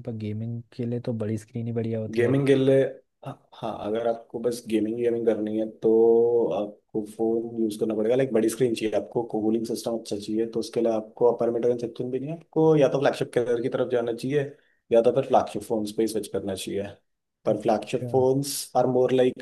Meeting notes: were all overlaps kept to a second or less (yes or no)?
yes